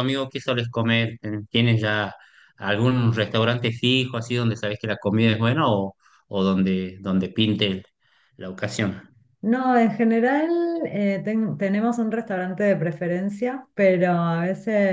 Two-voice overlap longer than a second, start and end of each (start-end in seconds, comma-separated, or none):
none